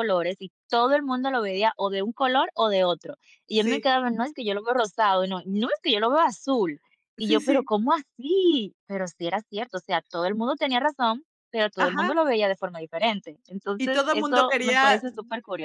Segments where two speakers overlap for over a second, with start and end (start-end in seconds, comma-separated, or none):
13.8-15.0